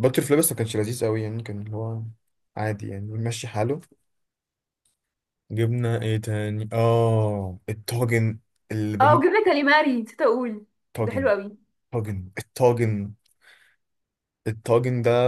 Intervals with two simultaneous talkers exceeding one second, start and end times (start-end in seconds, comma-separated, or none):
none